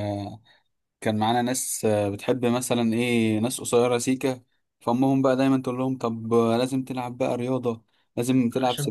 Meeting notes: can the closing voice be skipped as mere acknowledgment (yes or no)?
yes